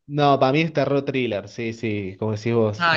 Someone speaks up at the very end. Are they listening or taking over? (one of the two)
listening